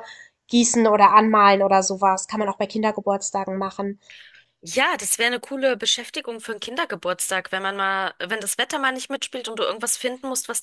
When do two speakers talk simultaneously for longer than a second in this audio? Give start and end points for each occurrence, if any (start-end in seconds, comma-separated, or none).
none